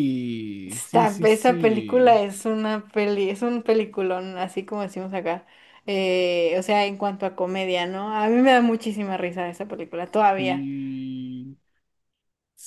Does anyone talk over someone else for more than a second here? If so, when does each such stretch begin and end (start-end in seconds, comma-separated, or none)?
0.6-2.2